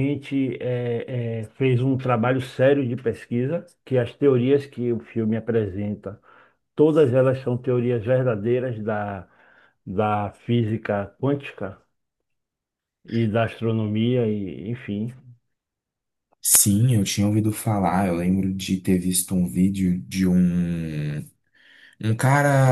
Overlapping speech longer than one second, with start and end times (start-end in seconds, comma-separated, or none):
none